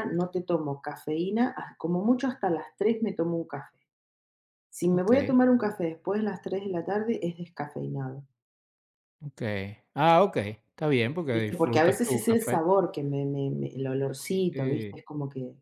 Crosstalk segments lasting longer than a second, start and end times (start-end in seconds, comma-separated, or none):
11.3-12.6